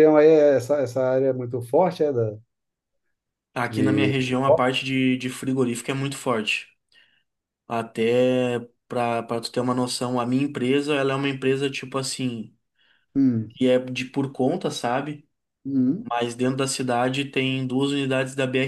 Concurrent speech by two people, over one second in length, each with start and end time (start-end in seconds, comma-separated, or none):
none